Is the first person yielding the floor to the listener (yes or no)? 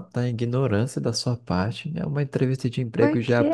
no